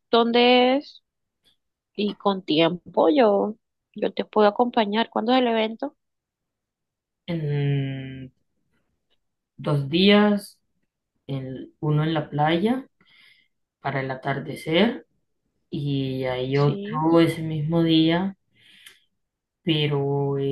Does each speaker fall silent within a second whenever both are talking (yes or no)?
yes